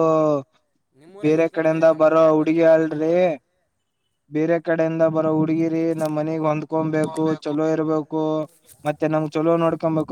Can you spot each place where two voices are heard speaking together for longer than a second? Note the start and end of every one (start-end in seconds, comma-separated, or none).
1.2-3.1